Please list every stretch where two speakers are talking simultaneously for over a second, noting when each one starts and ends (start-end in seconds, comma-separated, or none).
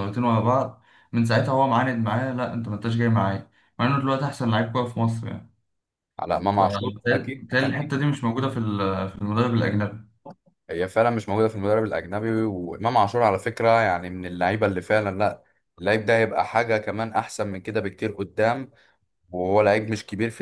6.5-8.0